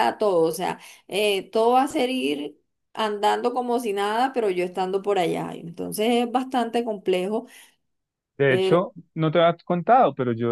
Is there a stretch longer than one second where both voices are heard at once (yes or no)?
no